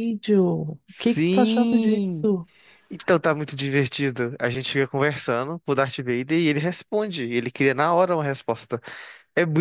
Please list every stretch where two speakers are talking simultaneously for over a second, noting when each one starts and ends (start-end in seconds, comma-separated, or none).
0.8-2.3